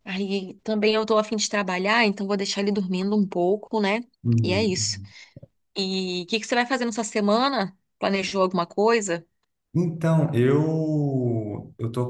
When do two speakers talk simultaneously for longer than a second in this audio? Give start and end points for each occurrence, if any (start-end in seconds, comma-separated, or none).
none